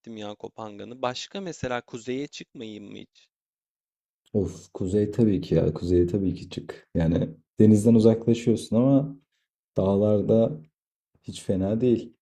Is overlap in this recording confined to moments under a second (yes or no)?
yes